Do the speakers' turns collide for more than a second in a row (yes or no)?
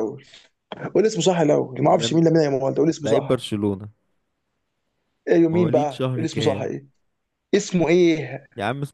yes